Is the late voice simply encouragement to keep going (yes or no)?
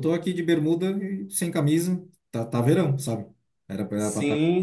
no